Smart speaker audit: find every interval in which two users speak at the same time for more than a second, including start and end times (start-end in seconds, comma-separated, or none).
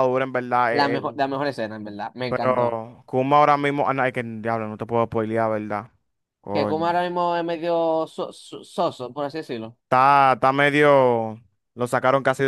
none